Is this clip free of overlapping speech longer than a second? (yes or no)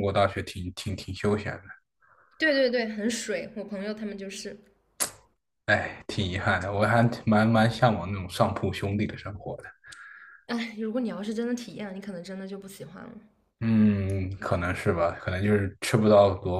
yes